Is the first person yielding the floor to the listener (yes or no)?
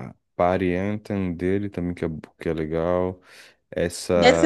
yes